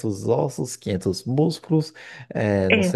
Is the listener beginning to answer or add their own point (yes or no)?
no